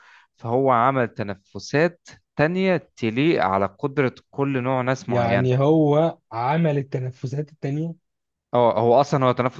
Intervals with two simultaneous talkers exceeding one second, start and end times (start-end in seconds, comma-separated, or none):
none